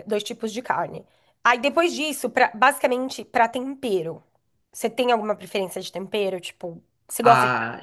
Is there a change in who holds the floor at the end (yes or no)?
yes